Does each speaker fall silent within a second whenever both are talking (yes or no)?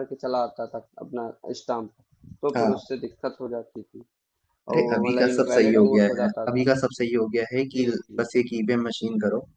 no